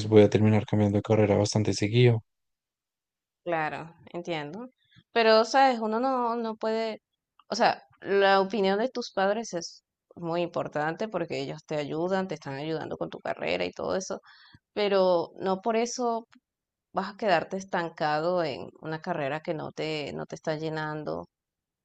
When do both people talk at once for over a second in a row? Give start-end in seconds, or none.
none